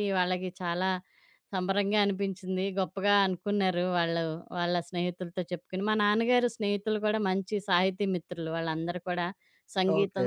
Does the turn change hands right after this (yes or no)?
no